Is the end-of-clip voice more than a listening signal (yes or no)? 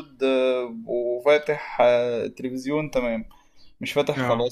no